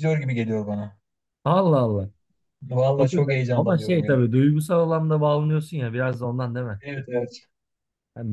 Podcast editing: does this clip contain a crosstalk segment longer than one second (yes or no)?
yes